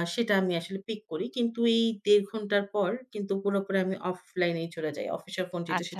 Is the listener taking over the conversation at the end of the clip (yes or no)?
no